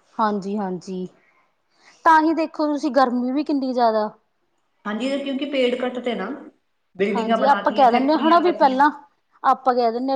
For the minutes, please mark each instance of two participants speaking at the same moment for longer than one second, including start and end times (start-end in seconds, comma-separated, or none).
7.2-8.8